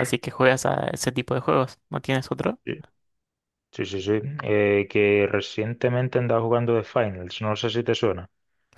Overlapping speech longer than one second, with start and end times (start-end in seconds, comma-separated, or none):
none